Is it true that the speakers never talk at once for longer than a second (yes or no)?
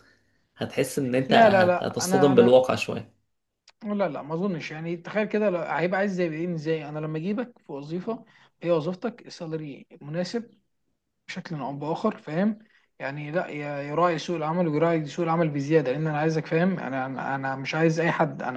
no